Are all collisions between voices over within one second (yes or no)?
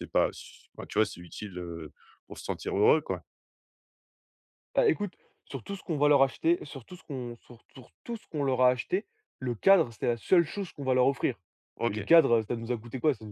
yes